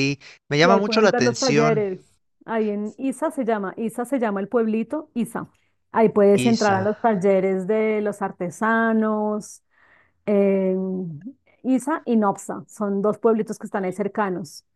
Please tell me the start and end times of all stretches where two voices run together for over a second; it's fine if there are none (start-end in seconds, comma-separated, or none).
0.6-1.9